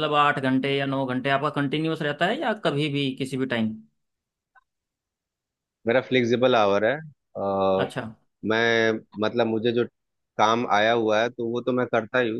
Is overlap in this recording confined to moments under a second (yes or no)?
yes